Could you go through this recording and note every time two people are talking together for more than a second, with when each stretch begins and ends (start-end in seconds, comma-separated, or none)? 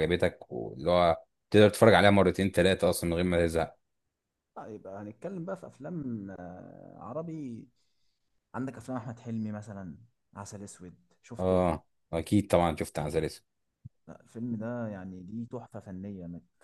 none